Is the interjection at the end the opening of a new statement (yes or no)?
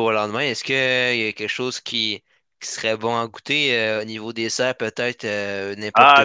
yes